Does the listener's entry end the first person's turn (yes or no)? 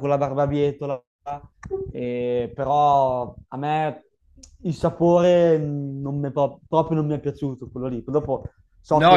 yes